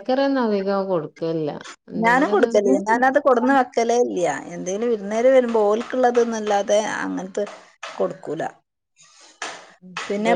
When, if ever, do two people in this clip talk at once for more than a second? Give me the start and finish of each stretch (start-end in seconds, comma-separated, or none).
none